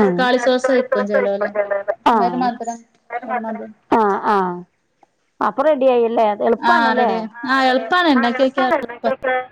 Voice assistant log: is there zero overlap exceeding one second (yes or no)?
yes